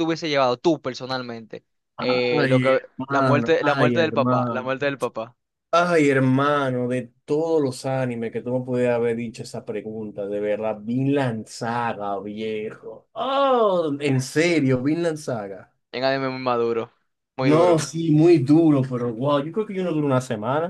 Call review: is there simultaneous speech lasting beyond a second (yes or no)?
yes